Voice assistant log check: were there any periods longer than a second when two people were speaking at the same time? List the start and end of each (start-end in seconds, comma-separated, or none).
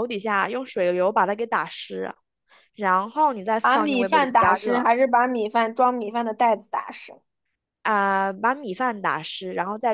3.6-4.9